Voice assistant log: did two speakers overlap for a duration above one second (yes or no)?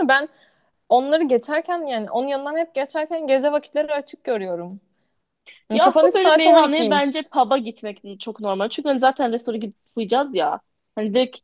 yes